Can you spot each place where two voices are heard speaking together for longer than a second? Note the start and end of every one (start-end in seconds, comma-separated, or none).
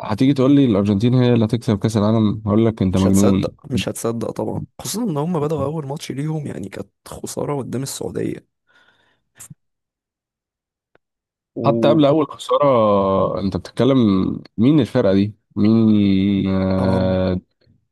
none